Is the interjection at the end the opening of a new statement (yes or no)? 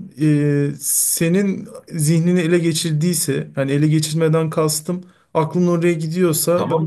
yes